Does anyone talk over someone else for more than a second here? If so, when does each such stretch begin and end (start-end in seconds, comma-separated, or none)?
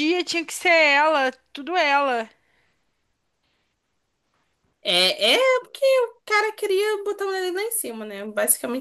none